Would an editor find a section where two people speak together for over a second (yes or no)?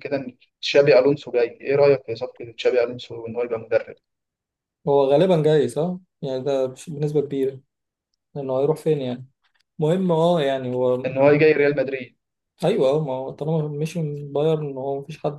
no